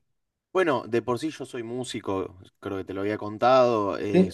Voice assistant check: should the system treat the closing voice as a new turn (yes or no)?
no